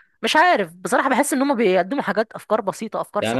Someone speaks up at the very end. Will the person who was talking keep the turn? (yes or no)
no